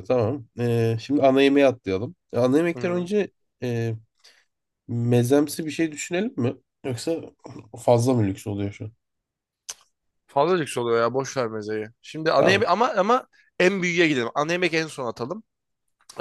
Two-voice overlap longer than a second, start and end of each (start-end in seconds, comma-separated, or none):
none